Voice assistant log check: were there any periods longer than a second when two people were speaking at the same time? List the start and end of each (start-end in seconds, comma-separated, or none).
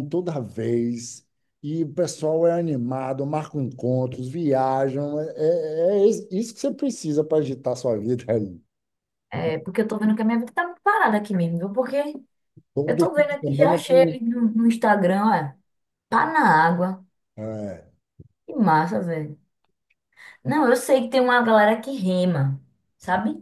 12.9-14.1